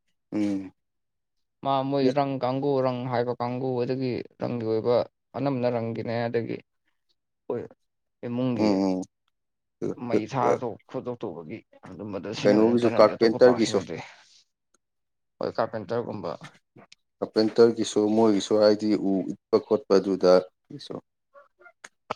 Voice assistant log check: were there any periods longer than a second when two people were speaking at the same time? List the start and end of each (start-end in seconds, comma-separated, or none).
12.4-13.8